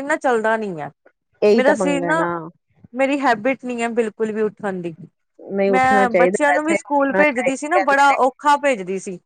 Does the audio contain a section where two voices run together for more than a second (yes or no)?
yes